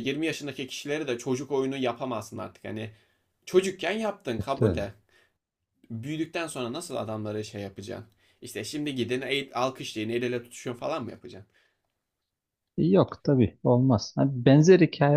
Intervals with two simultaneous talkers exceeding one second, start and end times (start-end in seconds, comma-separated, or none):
none